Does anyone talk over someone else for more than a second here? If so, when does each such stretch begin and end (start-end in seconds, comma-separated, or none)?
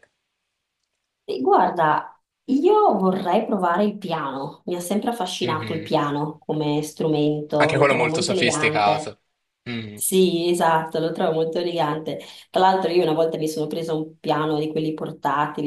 7.6-9.1